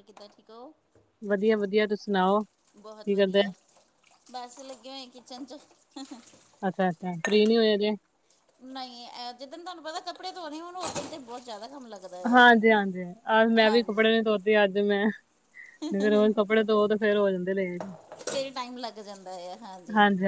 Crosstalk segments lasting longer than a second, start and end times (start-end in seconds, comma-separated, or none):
none